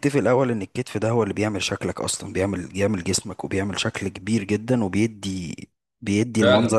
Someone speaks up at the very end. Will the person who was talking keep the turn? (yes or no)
yes